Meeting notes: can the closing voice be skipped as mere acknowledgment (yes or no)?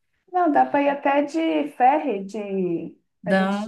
yes